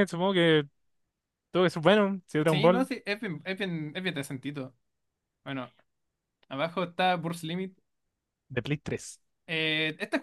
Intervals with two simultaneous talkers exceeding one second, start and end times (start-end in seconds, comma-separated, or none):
none